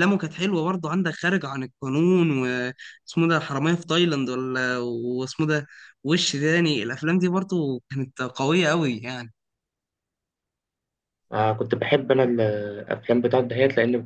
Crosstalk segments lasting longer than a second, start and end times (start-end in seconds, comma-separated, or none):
none